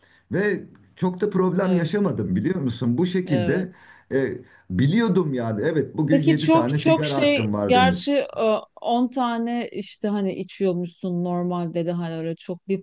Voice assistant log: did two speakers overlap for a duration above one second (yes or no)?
yes